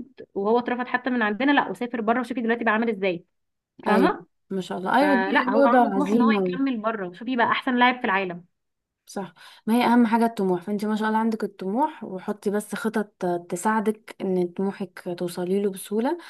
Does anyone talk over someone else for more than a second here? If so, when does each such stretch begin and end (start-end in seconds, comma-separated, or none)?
5.0-6.6